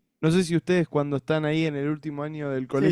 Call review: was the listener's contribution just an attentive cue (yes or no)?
no